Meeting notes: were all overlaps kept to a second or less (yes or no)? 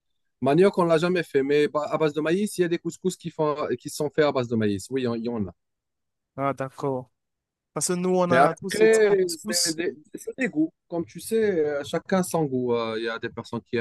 no